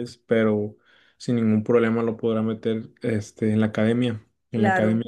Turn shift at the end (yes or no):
yes